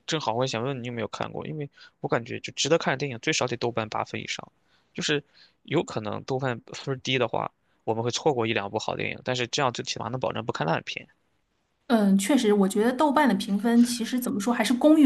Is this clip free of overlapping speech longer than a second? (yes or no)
yes